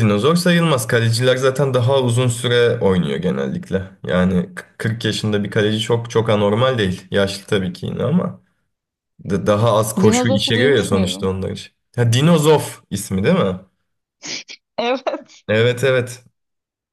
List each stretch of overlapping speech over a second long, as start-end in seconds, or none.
10.0-11.3